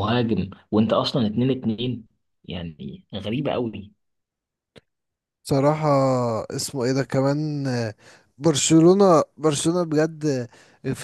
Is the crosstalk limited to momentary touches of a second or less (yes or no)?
yes